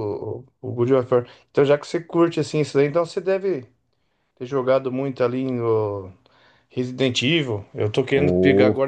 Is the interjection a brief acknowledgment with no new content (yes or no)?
yes